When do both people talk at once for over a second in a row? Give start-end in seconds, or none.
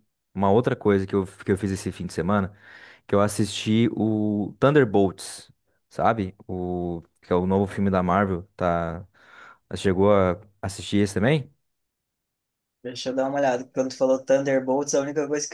none